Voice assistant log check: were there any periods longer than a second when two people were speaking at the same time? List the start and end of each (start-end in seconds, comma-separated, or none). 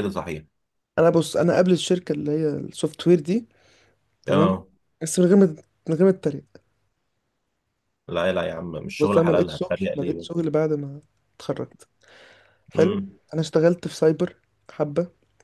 9.0-10.4